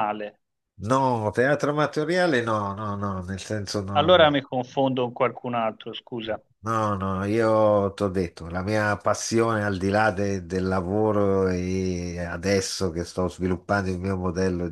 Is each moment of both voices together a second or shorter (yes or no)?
yes